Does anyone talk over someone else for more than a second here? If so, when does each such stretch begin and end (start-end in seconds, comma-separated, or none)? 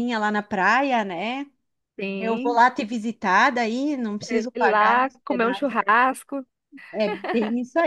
4.2-5.8